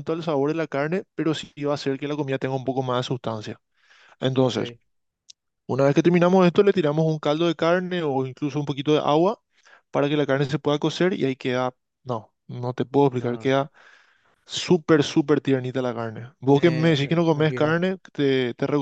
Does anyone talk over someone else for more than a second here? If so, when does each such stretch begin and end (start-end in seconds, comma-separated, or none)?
16.4-17.8